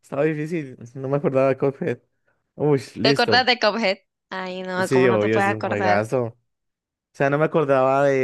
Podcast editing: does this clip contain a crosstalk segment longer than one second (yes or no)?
yes